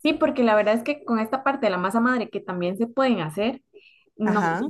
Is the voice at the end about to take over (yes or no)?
no